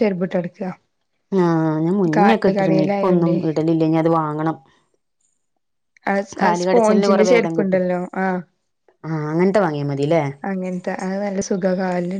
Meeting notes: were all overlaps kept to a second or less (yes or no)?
no